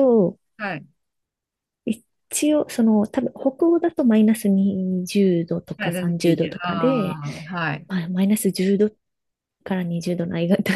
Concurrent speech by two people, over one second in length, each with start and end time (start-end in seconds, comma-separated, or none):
5.8-7.2